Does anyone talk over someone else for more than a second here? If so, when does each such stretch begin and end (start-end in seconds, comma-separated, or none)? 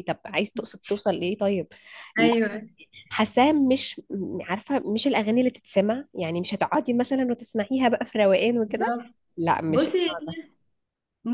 none